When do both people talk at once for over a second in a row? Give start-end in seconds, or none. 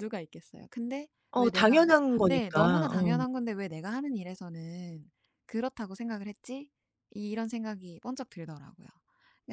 1.3-3.2